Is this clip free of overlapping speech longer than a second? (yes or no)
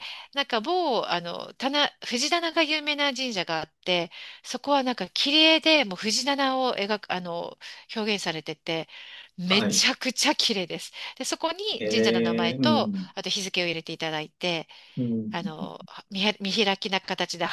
no